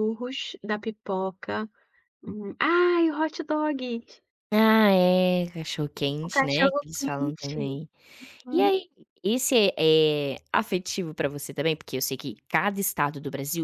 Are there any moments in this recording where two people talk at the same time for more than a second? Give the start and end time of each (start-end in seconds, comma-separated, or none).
6.2-7.7